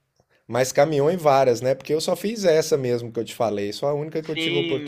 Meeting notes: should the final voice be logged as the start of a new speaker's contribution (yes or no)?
yes